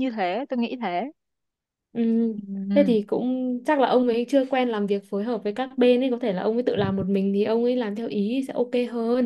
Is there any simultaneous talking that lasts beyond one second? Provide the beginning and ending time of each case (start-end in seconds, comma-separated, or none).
none